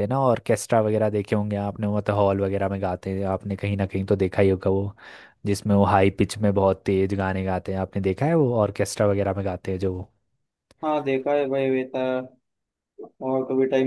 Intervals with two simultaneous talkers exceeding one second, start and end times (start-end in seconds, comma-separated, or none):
none